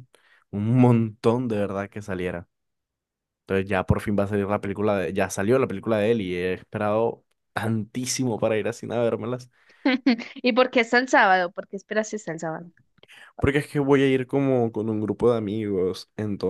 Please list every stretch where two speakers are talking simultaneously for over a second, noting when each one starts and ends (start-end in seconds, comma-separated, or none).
none